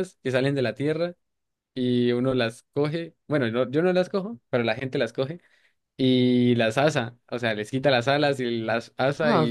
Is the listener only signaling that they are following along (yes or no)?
no